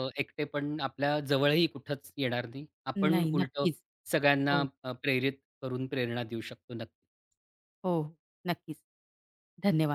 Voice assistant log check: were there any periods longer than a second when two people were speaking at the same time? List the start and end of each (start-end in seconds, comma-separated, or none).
none